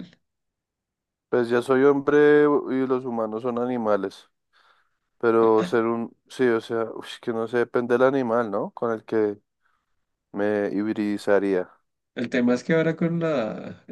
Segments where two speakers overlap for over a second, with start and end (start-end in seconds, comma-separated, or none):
none